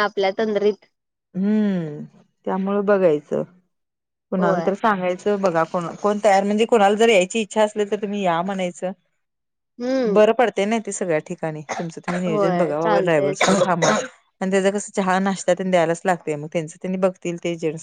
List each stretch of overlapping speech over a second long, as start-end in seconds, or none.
12.3-13.6